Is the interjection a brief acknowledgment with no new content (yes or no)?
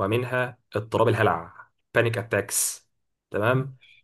yes